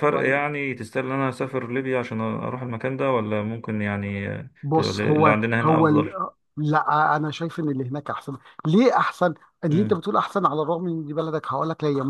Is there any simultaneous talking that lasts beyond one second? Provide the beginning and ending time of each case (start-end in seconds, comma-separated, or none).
4.6-6.1